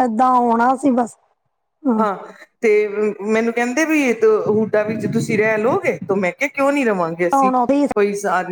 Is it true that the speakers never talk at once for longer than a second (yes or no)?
yes